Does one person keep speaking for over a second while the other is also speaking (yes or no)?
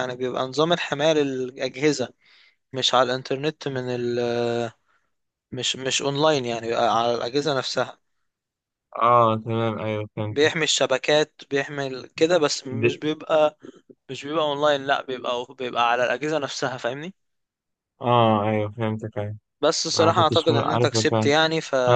yes